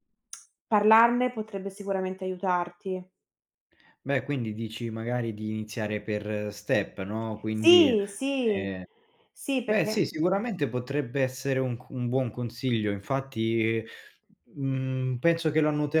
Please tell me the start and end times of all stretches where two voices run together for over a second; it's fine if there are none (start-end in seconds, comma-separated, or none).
none